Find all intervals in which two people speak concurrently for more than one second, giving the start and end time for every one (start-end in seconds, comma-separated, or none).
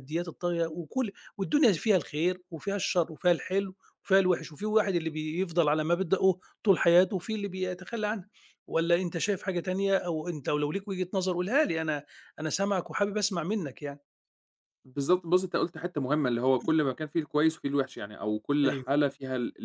none